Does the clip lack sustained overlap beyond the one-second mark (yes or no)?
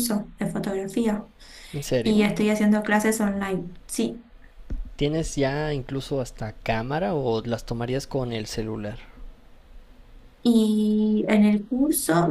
yes